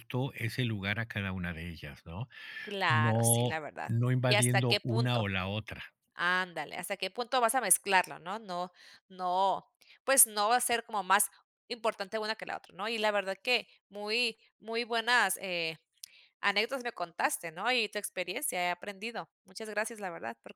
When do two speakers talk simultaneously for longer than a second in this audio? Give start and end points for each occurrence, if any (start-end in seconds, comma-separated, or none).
2.9-5.3